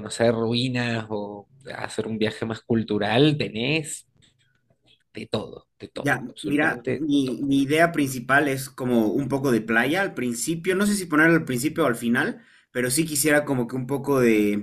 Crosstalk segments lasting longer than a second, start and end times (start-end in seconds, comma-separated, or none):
6.0-7.5